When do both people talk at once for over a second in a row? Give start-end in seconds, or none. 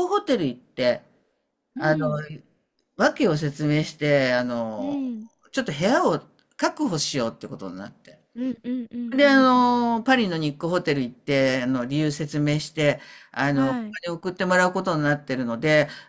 none